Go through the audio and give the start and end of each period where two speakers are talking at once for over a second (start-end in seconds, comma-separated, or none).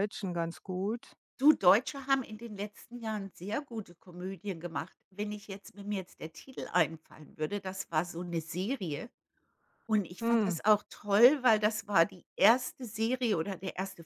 none